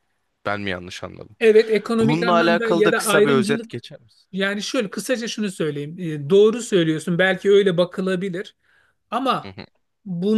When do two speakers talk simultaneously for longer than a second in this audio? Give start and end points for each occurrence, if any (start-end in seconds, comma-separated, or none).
2.0-3.7